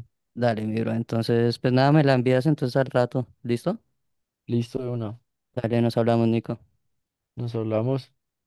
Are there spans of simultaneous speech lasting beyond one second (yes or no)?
no